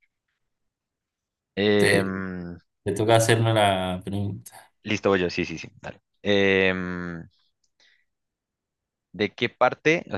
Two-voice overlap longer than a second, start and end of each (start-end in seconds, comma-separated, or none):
none